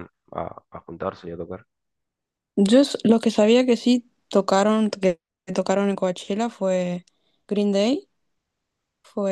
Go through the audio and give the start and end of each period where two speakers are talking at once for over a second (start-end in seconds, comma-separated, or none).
none